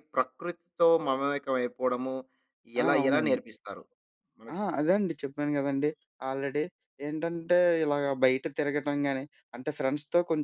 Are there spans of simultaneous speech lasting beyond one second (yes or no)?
no